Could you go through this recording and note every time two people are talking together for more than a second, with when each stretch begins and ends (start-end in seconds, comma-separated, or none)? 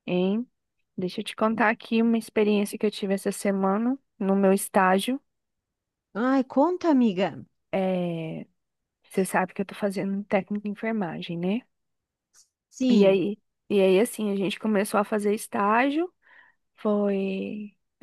none